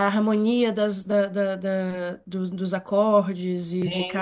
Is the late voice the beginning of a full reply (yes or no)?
no